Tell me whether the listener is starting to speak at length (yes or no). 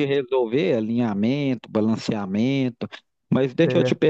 no